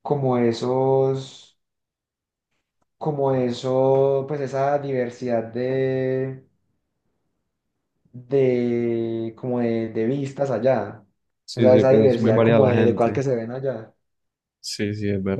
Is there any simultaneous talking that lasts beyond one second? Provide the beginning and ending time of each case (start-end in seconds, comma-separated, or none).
11.5-13.2